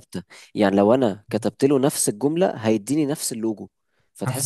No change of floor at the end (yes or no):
yes